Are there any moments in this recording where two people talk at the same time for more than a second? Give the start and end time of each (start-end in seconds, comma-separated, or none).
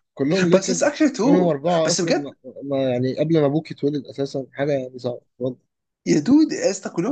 0.5-2.4